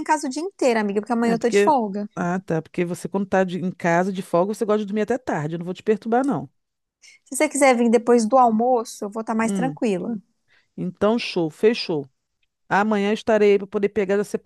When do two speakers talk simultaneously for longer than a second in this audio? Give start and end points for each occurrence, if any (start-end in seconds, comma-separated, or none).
none